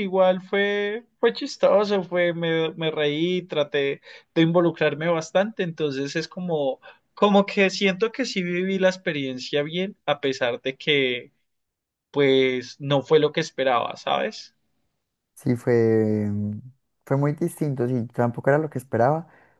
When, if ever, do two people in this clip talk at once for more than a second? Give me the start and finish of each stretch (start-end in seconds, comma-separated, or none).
none